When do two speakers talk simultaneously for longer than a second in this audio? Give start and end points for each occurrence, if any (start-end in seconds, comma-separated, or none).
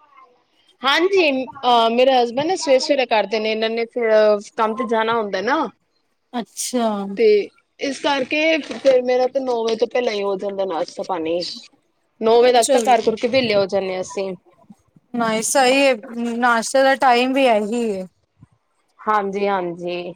none